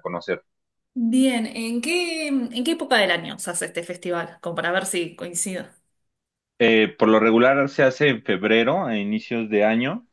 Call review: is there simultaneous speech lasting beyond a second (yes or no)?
no